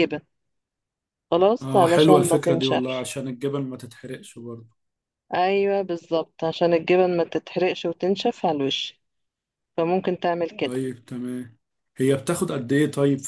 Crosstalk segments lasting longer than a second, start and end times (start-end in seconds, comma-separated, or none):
1.6-3.1